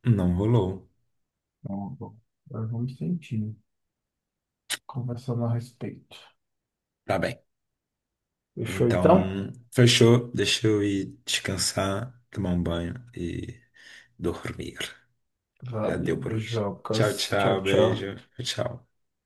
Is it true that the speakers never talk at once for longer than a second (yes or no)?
no